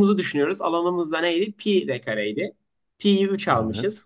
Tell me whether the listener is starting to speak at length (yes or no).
no